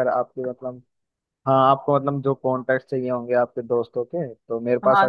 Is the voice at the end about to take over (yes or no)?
yes